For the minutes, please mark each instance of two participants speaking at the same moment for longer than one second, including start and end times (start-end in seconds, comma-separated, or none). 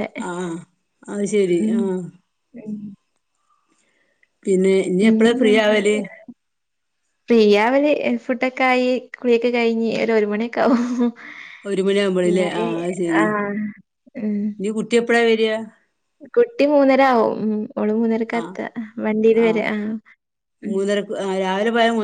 none